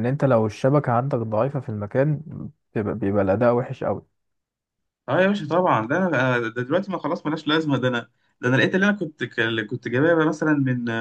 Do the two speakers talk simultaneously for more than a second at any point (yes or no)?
no